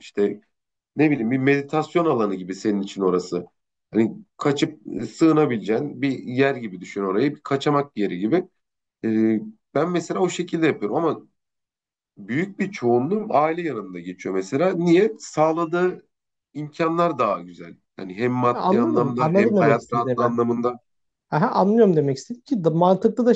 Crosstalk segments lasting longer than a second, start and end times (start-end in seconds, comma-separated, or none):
18.5-20.4